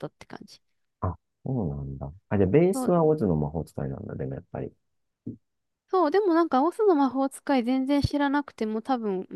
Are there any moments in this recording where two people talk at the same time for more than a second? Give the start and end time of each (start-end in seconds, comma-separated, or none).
none